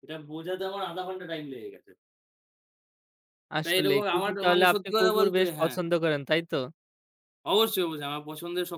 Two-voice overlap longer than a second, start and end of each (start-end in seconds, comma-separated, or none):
3.6-5.8